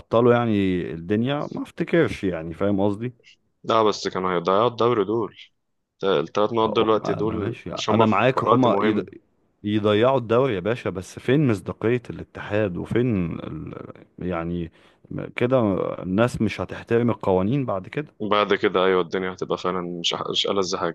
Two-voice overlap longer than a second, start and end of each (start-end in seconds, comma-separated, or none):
6.7-9.0